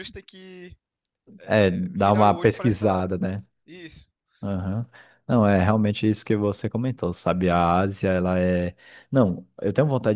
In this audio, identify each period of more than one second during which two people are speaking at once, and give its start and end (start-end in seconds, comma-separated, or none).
1.4-3.0